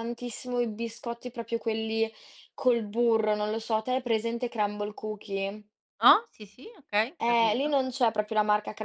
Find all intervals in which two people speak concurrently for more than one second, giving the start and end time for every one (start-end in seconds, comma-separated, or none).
none